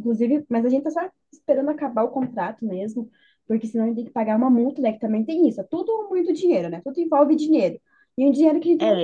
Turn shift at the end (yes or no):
yes